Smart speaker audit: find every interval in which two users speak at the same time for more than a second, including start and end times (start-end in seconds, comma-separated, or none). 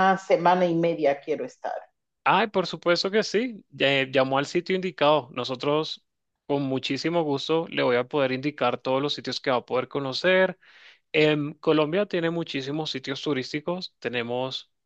none